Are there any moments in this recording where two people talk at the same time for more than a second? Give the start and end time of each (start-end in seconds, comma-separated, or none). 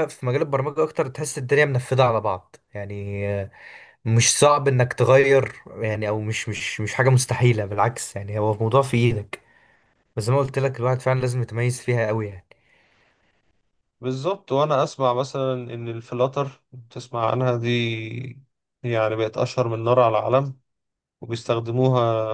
none